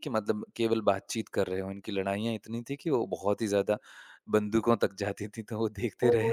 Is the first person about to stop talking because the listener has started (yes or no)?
yes